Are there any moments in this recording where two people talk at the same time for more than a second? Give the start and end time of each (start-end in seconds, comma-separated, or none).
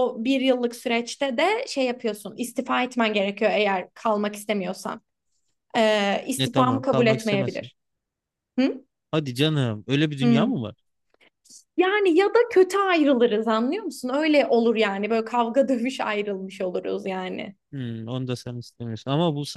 6.4-7.7